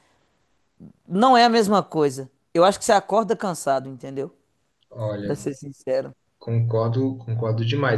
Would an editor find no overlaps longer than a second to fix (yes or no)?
yes